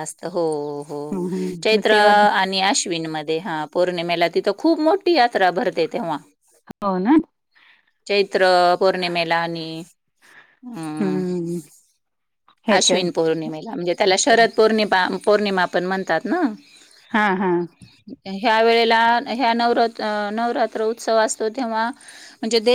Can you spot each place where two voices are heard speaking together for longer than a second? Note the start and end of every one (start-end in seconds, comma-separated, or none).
none